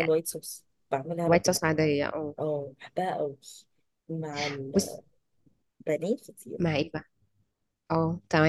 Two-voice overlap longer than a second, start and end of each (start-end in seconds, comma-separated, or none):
none